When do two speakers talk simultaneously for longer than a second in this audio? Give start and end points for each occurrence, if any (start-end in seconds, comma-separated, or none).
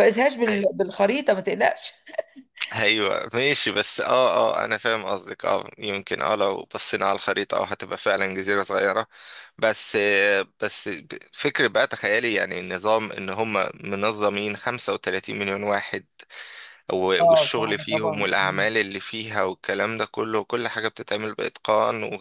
17.2-18.7